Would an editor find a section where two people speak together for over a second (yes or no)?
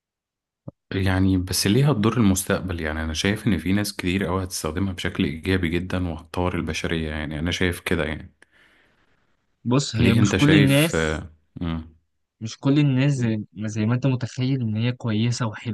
yes